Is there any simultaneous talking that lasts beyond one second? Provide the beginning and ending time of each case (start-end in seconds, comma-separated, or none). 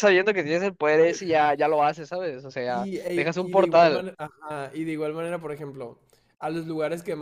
2.7-4.1